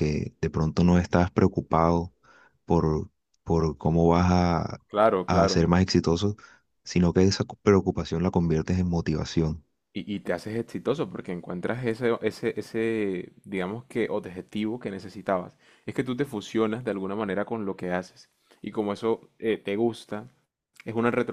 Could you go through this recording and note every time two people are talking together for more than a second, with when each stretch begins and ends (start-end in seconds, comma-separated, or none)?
none